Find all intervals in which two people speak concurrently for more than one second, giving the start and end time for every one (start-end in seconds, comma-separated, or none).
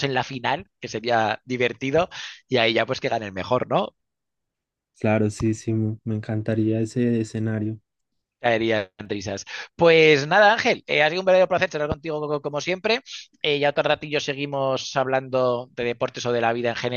none